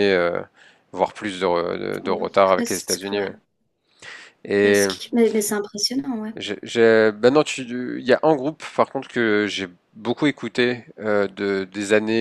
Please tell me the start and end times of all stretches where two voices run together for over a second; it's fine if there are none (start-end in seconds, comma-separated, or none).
2.0-3.3